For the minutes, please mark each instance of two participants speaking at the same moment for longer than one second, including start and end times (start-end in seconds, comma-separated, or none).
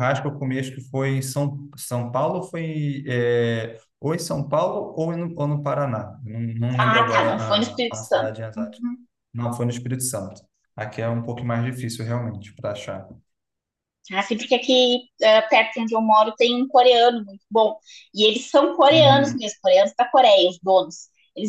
6.8-8.8